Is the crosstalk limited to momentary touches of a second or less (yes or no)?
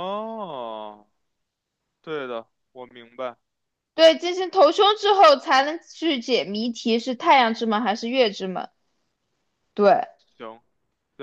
yes